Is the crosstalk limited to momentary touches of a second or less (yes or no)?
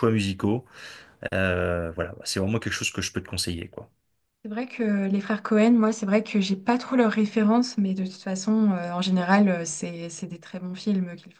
yes